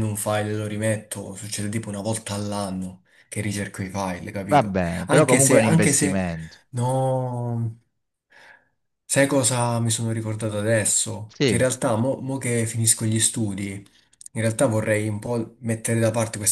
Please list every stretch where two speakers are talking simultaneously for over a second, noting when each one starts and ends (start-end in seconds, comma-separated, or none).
4.5-6.2